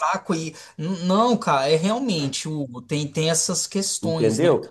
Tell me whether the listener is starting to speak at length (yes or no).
yes